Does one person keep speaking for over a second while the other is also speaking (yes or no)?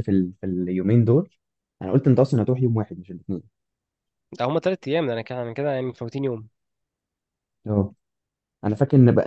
no